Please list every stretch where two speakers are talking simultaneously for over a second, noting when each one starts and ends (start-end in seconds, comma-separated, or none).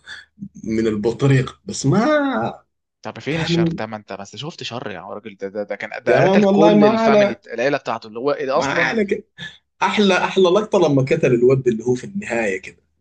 6.1-7.3